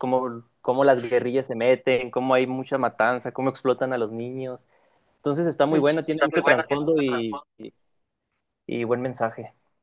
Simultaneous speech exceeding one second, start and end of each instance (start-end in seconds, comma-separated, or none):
5.6-7.5